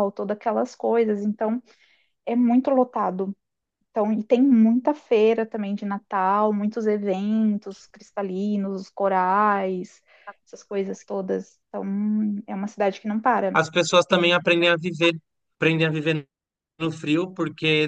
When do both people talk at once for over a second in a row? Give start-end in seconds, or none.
none